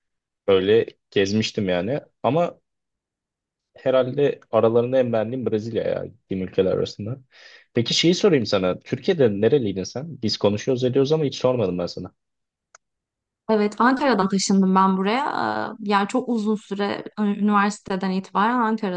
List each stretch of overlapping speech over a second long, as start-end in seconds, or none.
none